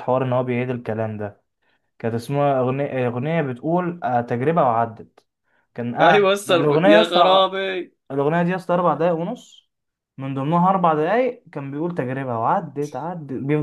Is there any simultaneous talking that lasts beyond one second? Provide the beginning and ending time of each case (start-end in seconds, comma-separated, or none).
6.0-7.5